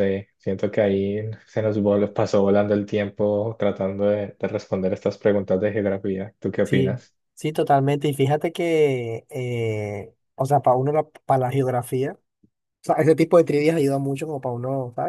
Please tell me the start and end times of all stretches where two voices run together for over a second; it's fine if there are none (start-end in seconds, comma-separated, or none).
none